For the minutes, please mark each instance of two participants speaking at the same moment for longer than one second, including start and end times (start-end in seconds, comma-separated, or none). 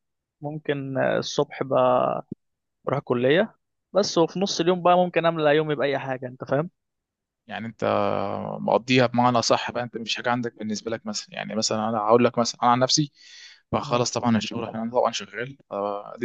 none